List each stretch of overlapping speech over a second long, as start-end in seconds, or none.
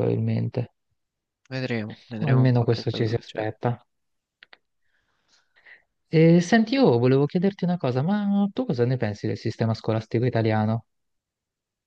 2.2-3.6